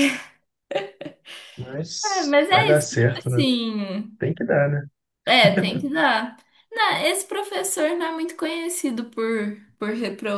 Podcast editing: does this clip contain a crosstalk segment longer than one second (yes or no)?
yes